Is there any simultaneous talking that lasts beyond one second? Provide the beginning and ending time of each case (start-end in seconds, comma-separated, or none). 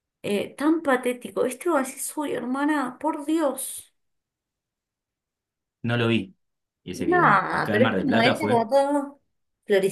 7.0-8.7